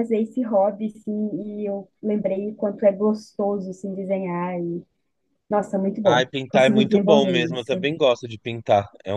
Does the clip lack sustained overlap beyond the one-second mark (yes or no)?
no